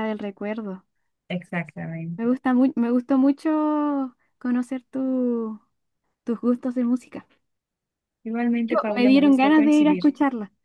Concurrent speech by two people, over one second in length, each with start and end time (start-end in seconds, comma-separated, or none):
8.6-10.0